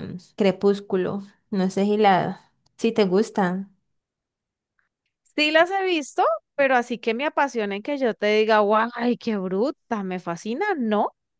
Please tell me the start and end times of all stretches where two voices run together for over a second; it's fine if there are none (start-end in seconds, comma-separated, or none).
none